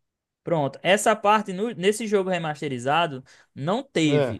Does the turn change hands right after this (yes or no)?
no